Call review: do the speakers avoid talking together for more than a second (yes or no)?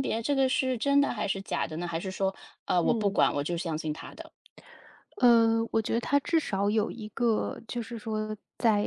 yes